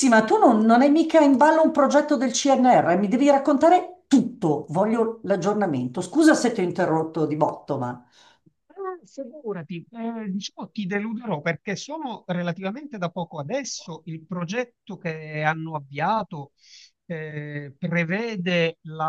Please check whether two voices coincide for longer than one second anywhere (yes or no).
no